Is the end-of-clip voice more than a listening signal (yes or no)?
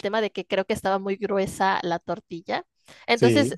no